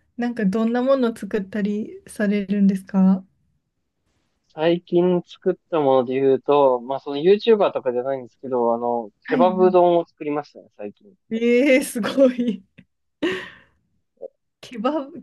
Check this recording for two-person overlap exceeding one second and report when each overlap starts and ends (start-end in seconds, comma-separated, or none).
none